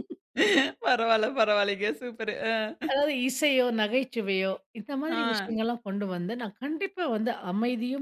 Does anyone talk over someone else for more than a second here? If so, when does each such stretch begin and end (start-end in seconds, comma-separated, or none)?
none